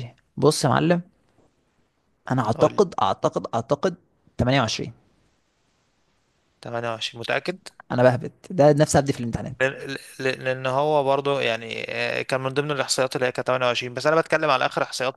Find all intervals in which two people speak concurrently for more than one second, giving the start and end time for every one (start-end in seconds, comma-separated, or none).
none